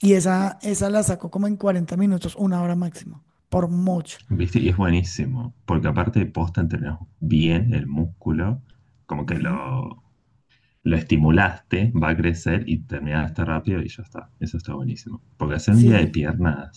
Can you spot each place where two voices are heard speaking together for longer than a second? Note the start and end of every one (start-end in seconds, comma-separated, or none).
none